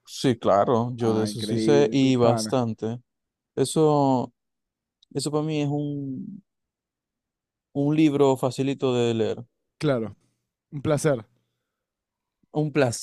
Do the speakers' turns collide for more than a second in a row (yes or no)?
yes